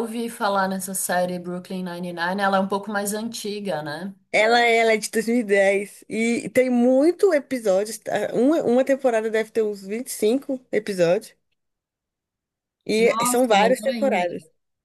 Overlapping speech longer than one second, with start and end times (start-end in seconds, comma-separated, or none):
12.9-14.2